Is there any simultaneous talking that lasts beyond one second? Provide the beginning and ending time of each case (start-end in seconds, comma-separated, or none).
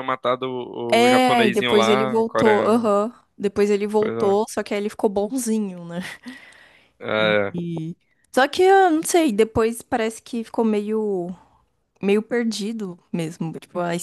0.9-3.0